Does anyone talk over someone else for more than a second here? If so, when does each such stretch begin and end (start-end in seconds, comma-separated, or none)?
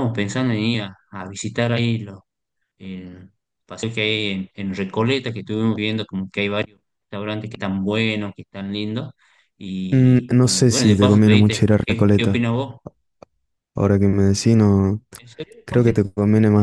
9.9-12.4